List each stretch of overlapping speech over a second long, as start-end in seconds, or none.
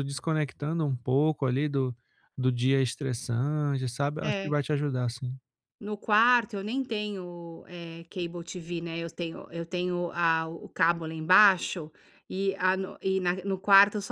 none